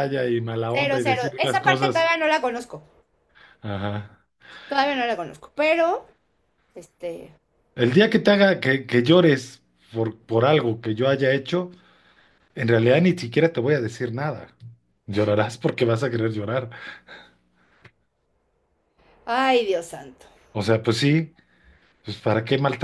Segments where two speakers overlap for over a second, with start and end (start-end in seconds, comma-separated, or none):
0.7-2.1